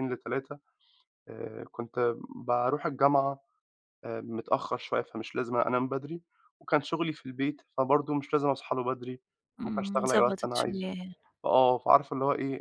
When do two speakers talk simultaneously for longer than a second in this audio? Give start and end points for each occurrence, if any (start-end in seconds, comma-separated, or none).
9.6-10.9